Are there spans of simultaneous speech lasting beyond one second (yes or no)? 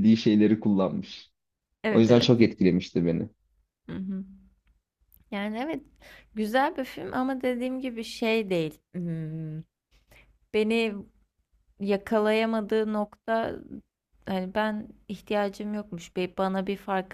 no